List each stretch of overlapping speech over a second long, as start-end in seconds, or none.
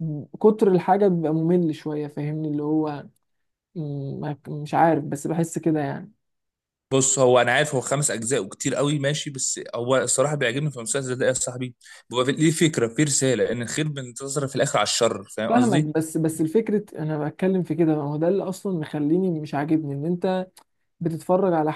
none